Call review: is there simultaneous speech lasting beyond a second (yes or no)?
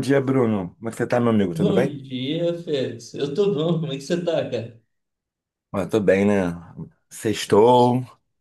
no